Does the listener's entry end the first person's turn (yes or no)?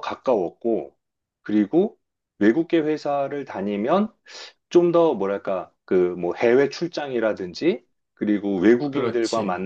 no